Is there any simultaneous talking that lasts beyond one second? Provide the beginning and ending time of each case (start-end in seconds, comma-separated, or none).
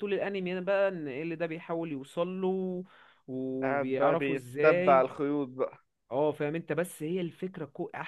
3.6-5.0